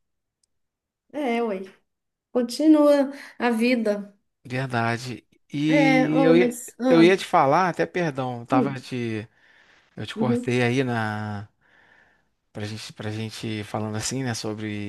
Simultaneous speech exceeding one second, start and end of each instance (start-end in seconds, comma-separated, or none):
5.7-7.1